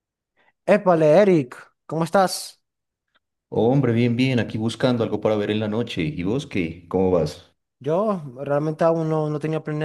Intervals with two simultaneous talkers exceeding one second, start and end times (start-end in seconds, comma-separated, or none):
none